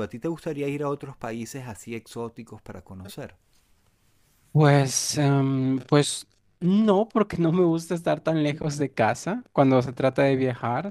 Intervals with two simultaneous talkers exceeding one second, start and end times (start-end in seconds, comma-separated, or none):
none